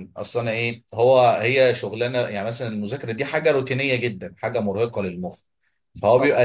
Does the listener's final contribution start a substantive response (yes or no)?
no